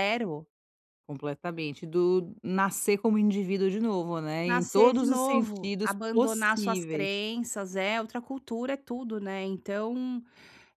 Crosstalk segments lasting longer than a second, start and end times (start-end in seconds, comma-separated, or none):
4.5-7.2